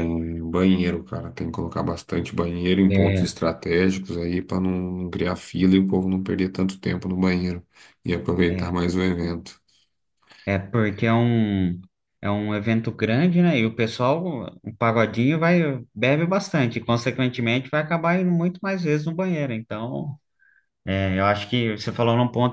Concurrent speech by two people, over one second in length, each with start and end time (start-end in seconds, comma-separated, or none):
none